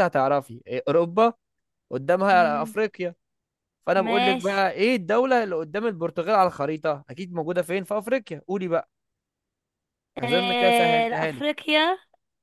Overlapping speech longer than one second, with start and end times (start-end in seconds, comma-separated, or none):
10.2-11.5